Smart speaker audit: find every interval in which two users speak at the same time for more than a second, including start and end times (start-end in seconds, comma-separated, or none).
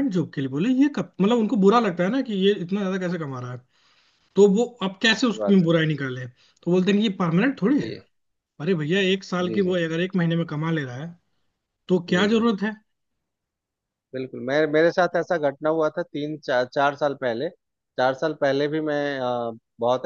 none